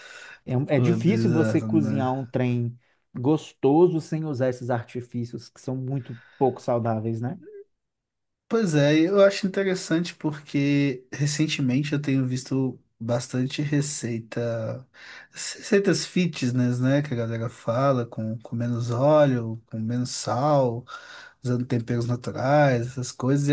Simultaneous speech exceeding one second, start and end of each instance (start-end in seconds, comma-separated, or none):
0.8-2.1